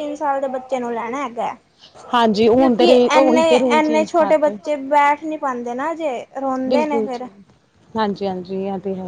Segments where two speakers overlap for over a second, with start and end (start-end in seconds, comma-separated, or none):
2.6-4.6